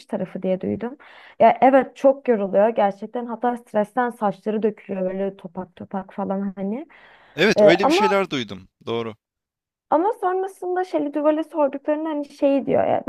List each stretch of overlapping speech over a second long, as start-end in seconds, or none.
none